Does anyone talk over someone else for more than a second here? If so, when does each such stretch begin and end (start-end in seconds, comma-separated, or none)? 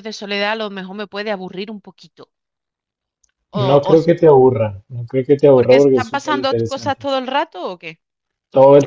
5.5-7.1